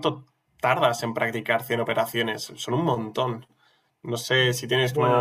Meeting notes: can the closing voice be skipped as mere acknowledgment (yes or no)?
no